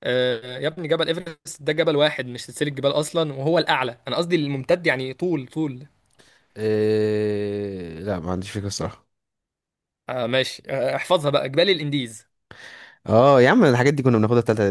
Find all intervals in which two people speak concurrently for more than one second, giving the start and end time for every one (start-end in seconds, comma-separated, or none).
none